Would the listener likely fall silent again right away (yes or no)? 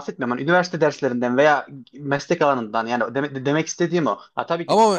no